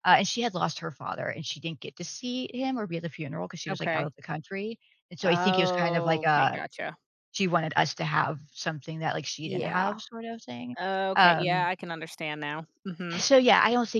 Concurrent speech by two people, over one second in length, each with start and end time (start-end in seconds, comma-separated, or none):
5.2-6.6